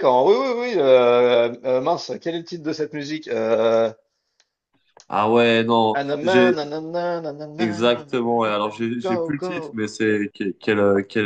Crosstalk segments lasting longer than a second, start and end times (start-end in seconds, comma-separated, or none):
7.6-9.8